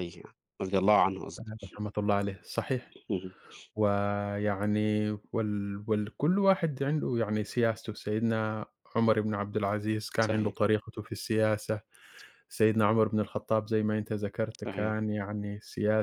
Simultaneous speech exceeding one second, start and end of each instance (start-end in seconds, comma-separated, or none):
none